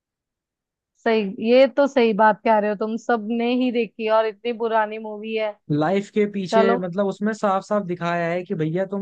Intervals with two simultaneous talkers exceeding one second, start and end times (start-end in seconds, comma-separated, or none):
none